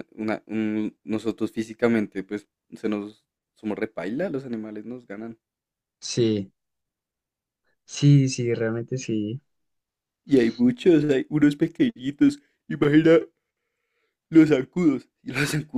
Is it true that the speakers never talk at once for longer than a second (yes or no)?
yes